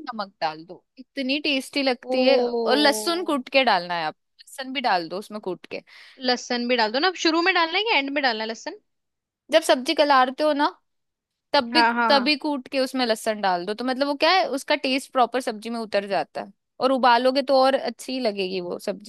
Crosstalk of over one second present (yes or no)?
yes